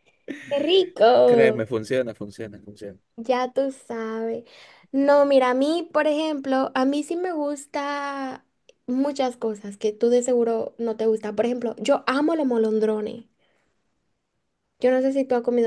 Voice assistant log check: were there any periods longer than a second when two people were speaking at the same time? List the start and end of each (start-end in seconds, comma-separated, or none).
none